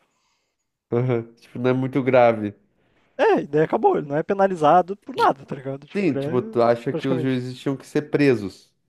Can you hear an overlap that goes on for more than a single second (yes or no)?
yes